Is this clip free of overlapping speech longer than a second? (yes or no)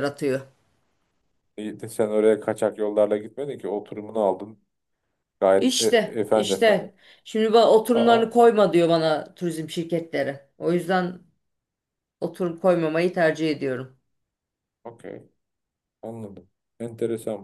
no